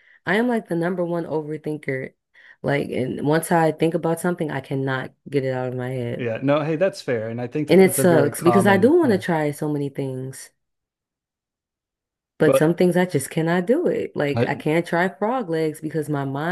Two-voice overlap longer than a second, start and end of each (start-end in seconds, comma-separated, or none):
7.7-9.2